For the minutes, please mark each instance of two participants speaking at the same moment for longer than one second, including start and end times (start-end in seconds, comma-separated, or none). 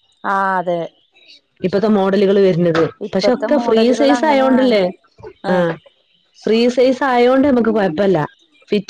3.1-4.8